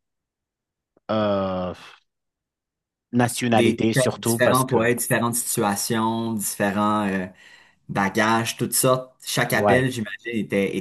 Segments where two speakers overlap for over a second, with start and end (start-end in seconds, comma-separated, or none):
3.5-4.9